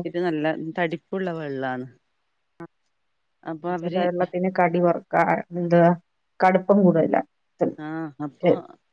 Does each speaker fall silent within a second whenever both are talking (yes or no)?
yes